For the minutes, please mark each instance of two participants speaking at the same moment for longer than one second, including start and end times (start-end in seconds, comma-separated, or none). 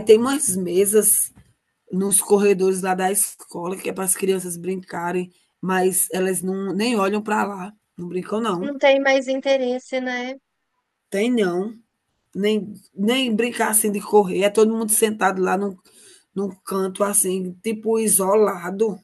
none